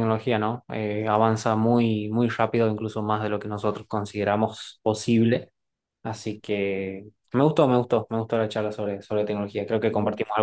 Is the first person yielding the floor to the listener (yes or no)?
no